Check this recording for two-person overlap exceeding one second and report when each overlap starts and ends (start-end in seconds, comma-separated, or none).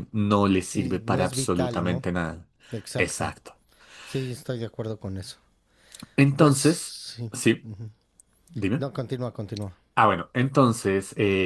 0.6-2.0